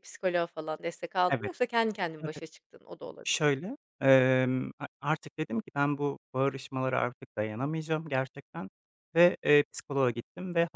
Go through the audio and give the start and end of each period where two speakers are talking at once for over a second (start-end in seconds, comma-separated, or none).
none